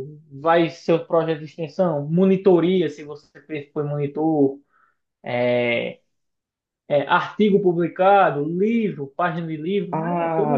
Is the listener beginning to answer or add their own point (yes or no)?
yes